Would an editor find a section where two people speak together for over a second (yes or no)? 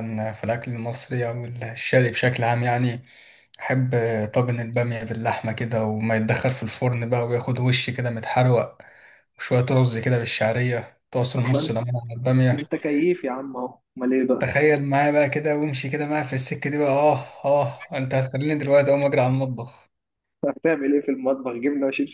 no